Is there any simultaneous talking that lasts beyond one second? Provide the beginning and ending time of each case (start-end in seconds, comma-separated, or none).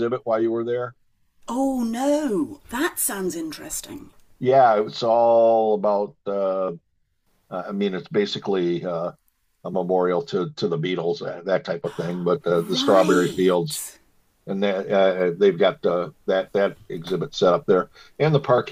12.6-13.8